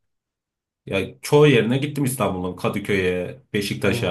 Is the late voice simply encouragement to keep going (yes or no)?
no